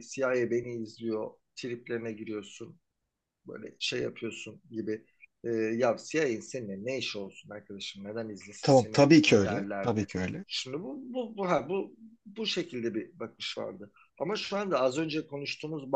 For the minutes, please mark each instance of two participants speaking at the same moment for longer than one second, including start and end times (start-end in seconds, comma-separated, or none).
8.6-10.1